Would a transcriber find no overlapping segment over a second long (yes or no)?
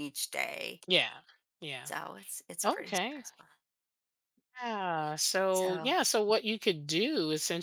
yes